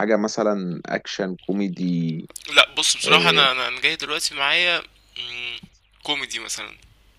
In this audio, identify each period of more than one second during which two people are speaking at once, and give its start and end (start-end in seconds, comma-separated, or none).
none